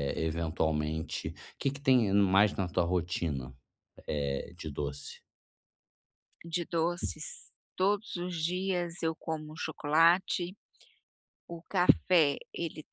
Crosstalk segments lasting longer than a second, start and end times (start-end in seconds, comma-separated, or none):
none